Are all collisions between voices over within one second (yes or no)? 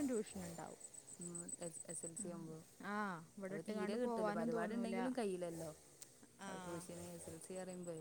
no